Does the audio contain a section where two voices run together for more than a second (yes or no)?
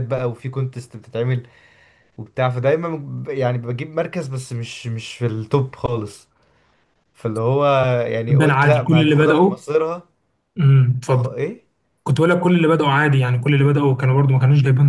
yes